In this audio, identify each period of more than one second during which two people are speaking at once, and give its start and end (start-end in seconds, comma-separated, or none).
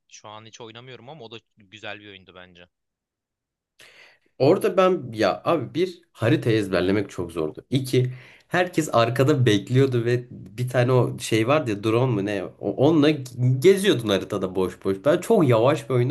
none